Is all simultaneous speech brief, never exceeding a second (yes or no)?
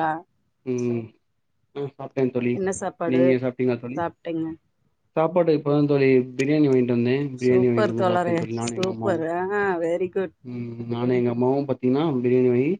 no